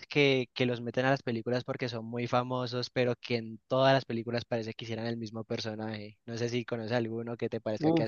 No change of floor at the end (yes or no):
no